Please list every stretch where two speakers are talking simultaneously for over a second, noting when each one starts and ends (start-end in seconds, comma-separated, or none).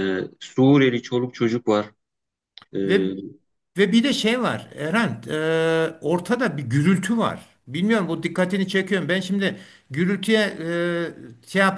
none